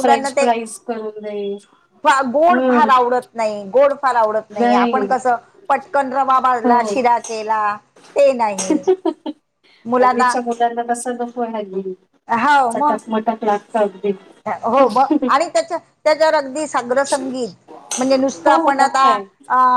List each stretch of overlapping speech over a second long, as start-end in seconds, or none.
none